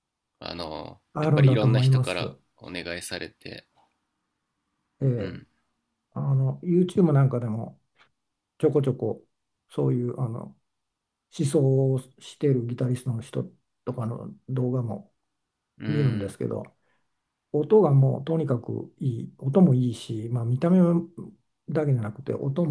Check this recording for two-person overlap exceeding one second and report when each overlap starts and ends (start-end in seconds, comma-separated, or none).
1.1-2.4